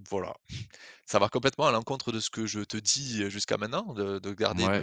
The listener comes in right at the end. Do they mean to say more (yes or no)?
yes